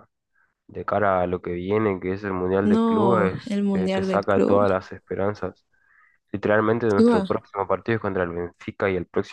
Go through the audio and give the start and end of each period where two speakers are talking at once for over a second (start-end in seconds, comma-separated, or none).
2.6-4.7